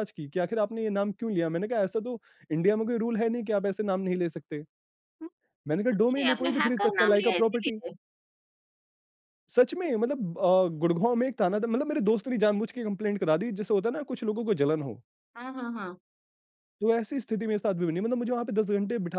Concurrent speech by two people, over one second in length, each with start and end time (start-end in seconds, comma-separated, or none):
5.8-7.8